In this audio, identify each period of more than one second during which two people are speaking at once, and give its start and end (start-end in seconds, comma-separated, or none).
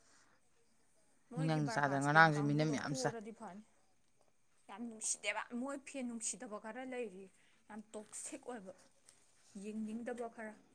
1.4-3.1